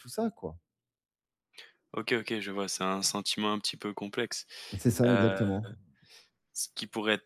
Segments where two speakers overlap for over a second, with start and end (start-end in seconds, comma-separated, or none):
none